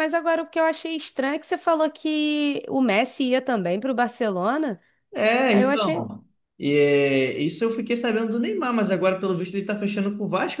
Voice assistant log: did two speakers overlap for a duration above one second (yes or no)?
no